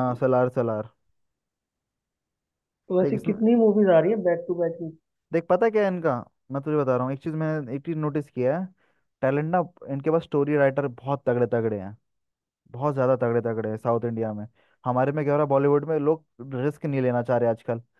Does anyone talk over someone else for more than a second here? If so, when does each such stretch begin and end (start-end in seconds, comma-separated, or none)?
none